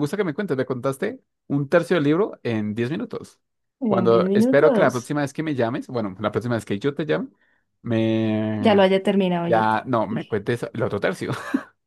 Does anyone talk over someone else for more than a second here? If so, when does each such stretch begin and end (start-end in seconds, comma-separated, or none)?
3.9-5.1